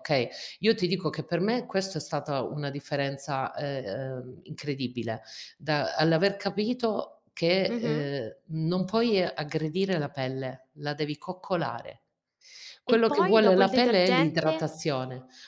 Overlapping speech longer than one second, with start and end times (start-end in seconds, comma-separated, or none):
12.8-14.7